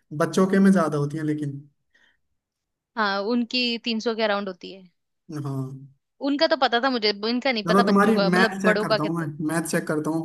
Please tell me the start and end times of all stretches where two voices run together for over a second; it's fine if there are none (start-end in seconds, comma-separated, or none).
7.7-9.3